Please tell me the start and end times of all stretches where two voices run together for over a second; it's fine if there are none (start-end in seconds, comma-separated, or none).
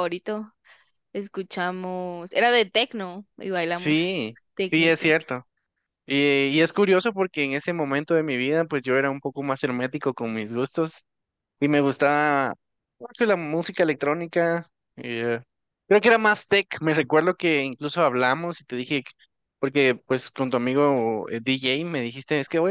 3.7-5.1